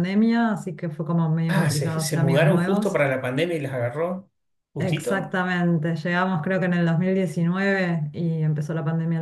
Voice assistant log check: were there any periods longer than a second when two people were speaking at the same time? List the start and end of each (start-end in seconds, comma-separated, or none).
1.5-3.0